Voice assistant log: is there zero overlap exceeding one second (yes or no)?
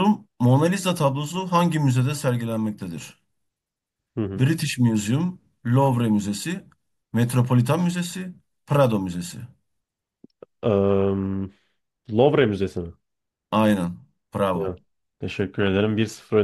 yes